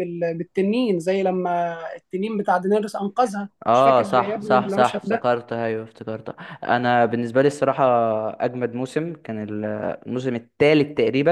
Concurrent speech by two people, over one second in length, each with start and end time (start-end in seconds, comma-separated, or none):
3.7-5.3